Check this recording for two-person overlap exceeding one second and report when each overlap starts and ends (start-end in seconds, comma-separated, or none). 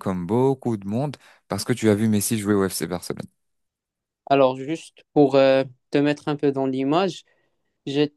none